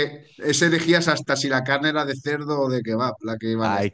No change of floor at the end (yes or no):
no